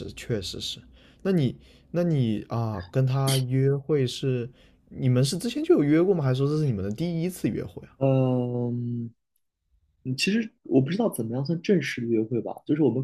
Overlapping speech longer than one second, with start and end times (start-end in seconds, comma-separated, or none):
none